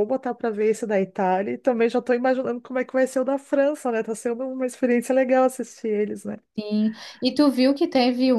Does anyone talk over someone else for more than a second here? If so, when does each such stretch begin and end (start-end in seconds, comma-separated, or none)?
none